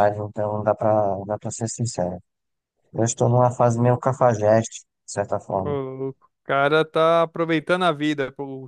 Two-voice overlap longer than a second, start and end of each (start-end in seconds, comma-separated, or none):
none